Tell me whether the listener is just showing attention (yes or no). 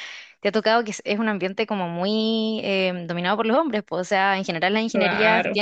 yes